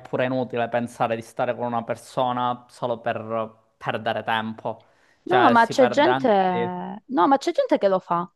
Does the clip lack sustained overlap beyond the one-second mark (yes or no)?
no